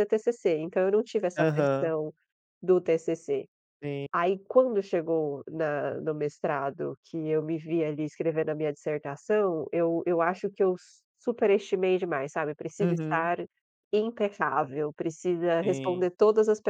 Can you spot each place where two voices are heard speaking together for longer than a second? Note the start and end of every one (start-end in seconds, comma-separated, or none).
none